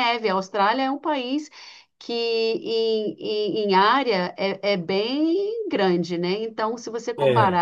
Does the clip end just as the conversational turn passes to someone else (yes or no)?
no